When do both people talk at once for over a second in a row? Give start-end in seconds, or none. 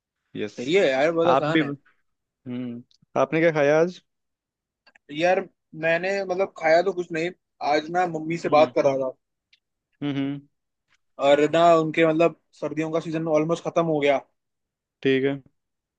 none